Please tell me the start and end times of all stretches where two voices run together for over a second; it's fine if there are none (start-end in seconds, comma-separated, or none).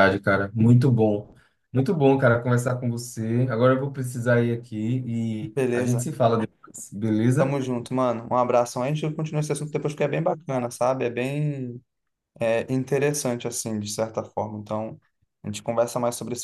none